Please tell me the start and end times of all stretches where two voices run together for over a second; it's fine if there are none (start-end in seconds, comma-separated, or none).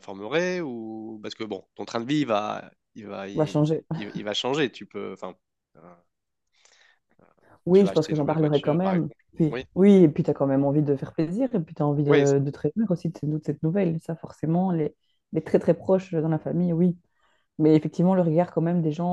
7.7-9.6